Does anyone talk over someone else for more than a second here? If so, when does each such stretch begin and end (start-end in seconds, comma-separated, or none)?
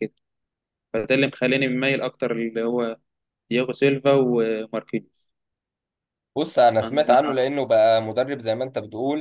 none